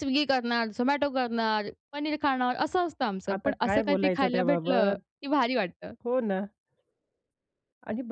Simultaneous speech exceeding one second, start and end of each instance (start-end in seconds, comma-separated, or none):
3.3-5.0